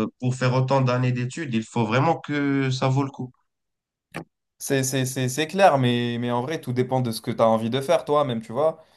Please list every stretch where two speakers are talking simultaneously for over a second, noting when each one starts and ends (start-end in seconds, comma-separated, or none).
none